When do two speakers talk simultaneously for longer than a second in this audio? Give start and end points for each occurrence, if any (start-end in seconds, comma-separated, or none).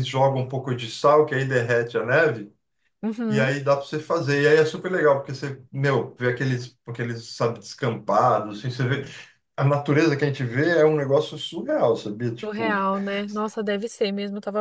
none